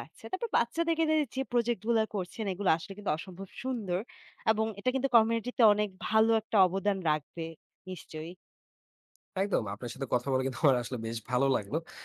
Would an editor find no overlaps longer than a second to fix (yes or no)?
yes